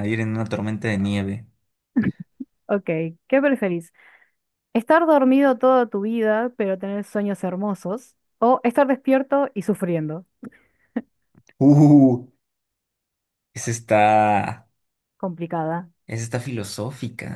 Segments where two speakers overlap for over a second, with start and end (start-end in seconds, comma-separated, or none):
none